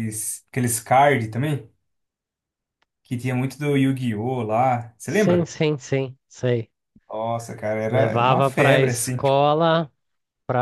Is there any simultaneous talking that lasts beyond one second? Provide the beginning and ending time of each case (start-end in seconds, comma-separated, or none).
7.9-9.2